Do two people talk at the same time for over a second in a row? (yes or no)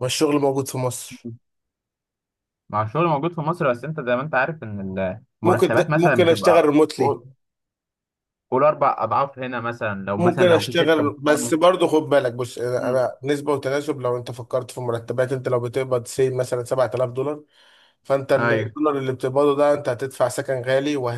yes